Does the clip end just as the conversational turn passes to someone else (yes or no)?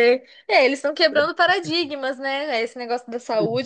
no